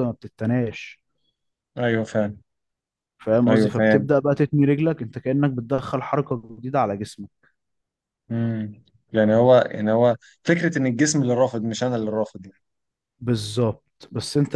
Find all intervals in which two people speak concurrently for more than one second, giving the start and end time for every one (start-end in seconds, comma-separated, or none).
none